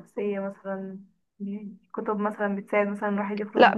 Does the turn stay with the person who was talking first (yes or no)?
no